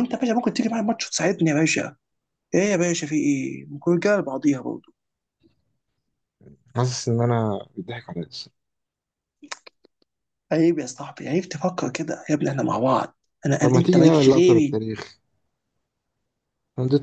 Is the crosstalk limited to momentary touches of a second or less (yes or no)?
no